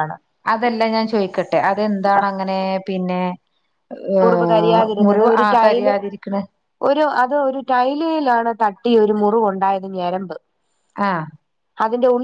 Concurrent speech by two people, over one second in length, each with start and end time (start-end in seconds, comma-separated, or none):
4.2-5.9